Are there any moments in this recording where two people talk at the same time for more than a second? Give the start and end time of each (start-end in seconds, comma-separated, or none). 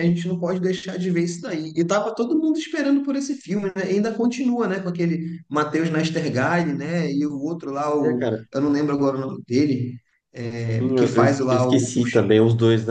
10.6-12.0